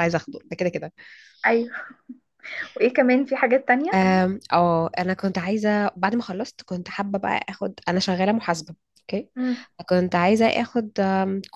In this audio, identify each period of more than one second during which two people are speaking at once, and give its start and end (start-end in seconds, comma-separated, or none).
none